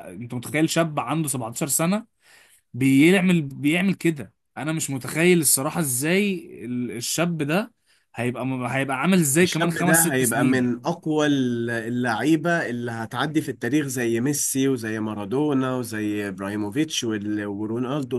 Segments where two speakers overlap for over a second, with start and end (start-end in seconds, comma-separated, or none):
9.4-10.8